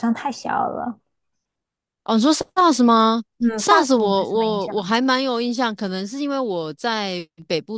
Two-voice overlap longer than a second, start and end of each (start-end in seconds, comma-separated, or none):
3.6-4.9